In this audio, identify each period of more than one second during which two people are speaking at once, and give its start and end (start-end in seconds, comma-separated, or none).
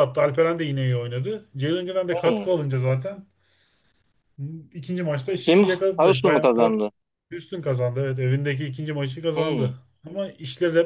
5.4-6.8